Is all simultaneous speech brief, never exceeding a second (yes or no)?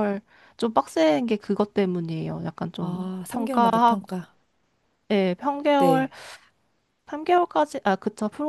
no